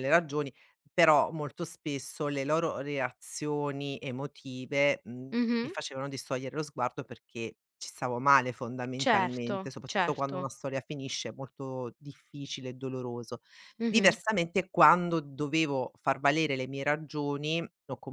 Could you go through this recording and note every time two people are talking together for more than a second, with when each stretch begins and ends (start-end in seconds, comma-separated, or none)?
9.0-10.4